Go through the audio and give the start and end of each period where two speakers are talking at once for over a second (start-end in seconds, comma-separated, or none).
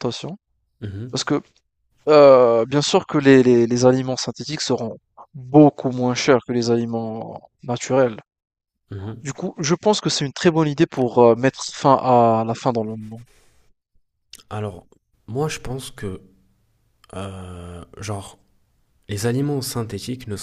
none